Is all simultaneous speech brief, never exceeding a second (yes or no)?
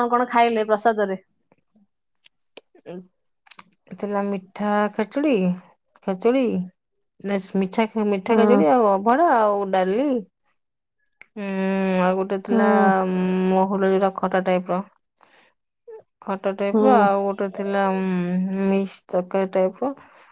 yes